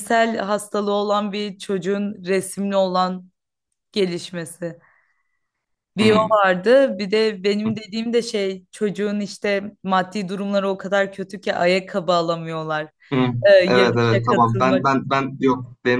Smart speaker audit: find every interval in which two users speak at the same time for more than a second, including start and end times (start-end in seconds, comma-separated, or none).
13.5-14.9